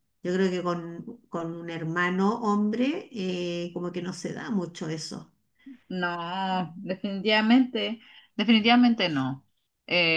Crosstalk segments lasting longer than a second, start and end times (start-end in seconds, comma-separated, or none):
none